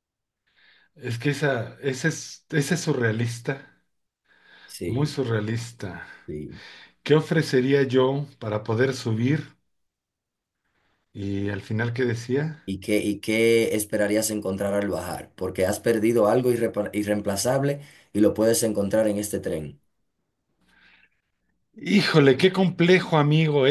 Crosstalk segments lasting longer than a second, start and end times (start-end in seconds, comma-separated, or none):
none